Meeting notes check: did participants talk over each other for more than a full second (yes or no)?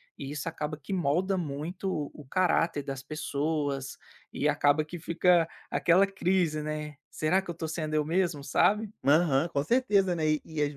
no